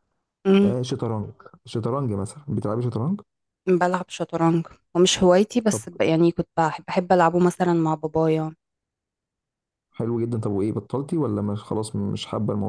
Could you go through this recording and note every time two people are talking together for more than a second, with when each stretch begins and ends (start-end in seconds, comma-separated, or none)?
none